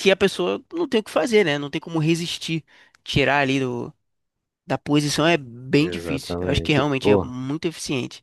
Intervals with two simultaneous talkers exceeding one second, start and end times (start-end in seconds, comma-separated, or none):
5.8-7.3